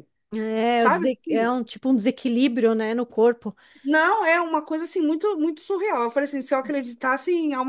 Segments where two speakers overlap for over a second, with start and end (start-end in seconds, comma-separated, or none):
none